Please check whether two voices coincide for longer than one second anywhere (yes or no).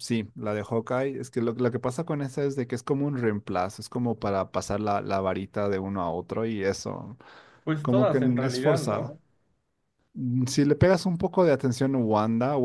yes